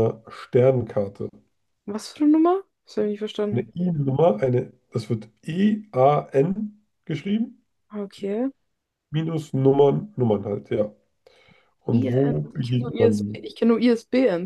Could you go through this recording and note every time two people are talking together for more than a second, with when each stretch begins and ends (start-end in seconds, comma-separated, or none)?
11.9-13.5